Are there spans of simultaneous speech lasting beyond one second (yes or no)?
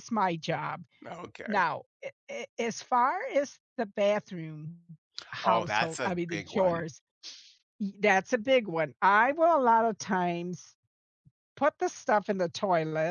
yes